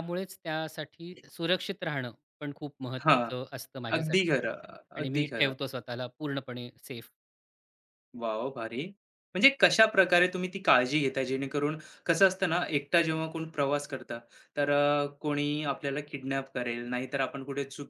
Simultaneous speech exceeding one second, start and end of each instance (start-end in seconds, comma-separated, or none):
none